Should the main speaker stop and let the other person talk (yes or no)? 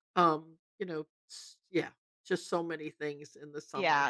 yes